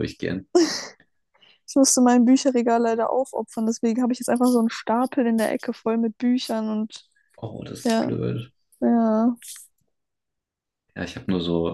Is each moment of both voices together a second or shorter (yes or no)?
yes